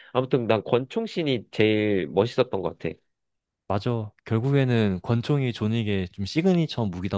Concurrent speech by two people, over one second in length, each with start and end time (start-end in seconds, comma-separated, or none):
none